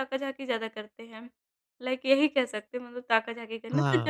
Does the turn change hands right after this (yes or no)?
yes